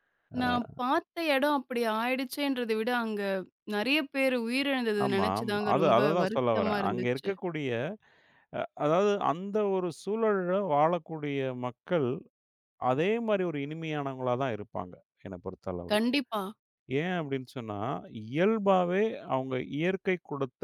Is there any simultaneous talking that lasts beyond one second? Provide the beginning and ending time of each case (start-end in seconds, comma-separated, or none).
5.0-7.3